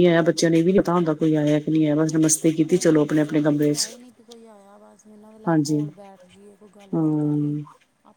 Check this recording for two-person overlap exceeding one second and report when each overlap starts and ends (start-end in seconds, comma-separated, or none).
none